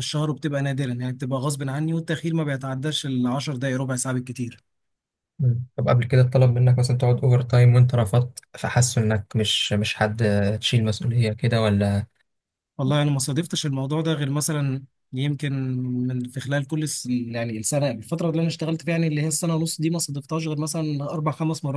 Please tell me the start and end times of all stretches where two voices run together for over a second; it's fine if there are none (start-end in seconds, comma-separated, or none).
none